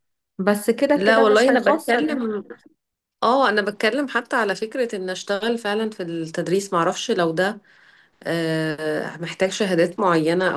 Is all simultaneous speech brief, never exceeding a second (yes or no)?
no